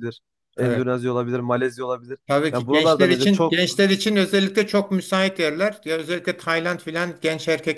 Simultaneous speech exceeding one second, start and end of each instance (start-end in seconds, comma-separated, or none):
2.3-3.6